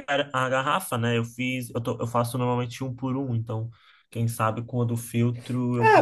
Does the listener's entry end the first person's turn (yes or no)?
yes